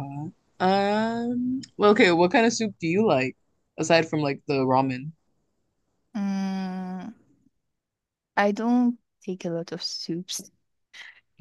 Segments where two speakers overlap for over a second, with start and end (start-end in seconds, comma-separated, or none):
none